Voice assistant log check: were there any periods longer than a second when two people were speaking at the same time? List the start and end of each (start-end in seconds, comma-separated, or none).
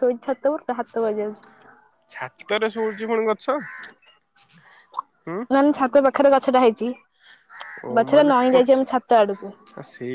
8.0-9.5